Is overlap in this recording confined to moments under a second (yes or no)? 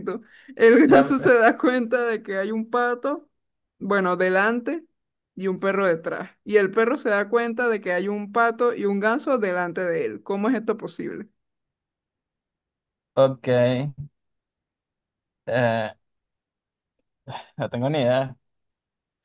yes